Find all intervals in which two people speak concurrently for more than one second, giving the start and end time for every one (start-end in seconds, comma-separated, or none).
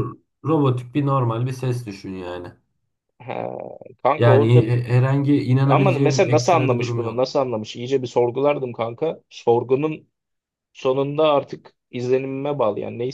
5.6-7.3